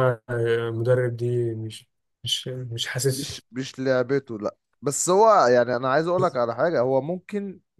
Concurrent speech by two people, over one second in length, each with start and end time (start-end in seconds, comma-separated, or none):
none